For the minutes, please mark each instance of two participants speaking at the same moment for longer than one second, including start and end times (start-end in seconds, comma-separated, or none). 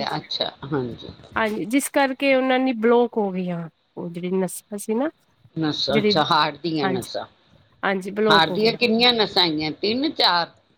none